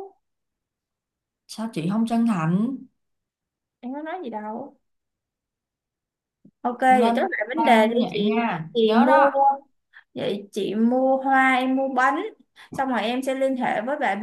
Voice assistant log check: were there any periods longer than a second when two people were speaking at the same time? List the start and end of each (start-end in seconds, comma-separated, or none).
6.9-9.3